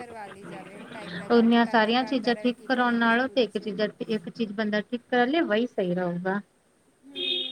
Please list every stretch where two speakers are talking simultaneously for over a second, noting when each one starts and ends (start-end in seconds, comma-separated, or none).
1.4-3.7